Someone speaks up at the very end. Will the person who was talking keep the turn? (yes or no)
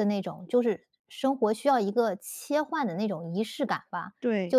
yes